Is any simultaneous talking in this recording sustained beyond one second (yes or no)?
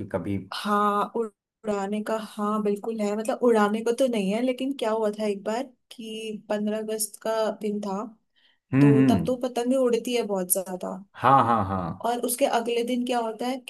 no